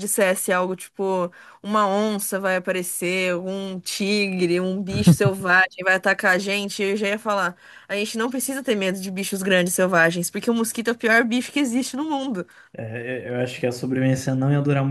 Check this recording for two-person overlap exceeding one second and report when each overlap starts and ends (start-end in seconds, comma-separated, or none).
none